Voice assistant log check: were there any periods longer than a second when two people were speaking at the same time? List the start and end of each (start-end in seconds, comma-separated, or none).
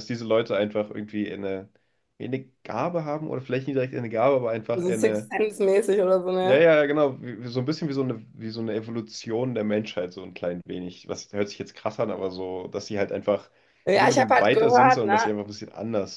13.9-15.3